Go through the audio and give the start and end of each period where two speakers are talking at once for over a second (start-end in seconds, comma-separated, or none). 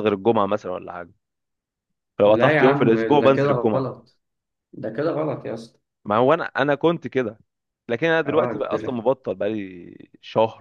2.2-3.9